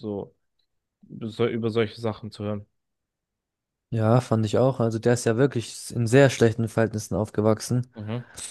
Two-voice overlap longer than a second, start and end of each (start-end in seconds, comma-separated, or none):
none